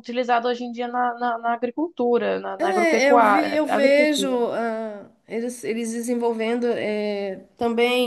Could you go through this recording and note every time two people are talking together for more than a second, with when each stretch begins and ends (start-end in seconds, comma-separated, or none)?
2.6-4.5